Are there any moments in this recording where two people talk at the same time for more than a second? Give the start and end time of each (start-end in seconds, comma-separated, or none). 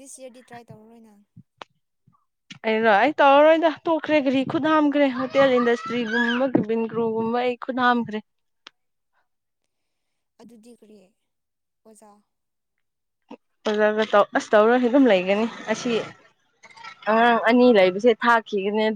none